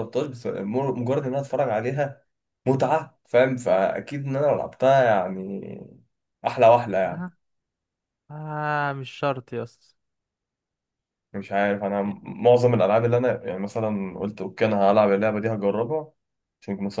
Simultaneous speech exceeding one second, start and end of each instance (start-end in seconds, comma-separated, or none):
none